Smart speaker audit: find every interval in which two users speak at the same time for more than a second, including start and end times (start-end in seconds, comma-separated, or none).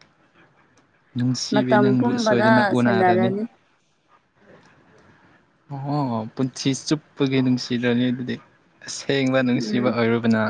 1.5-3.3